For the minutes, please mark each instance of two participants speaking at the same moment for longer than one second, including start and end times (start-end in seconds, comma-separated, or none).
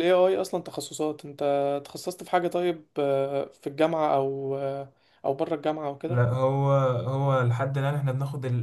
none